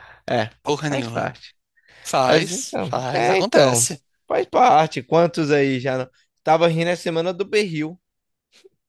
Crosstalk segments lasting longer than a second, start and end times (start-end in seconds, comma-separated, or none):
2.3-3.9